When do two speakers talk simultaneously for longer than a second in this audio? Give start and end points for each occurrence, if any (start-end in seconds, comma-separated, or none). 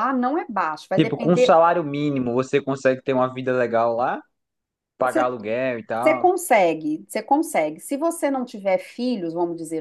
none